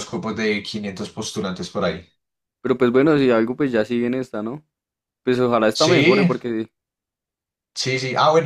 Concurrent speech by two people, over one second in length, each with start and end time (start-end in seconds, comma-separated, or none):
none